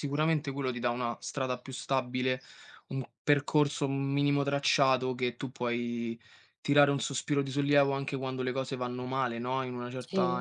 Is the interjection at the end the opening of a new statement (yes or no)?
no